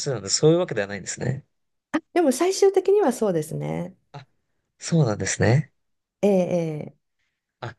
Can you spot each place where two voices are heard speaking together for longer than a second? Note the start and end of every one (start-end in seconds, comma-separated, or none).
none